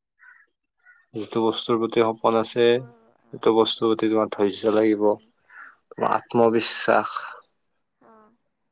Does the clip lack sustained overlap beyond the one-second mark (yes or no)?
no